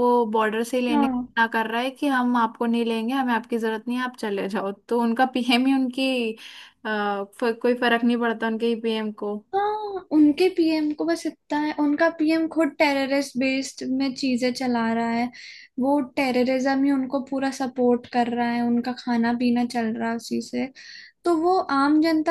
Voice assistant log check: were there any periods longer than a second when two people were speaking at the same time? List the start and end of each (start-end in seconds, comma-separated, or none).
none